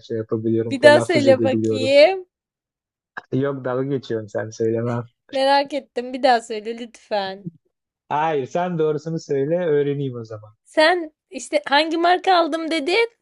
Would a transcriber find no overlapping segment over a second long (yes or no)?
no